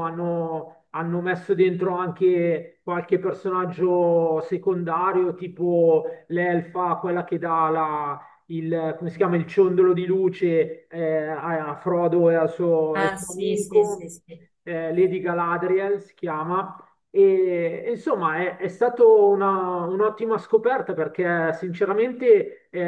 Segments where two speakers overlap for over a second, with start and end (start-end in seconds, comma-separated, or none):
12.9-14.1